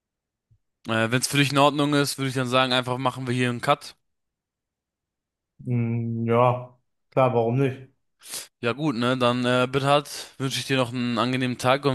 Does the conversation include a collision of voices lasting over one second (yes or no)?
no